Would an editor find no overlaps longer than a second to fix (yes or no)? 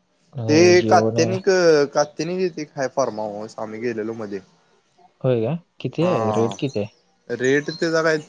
yes